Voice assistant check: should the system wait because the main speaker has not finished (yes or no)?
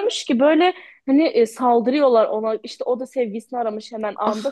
yes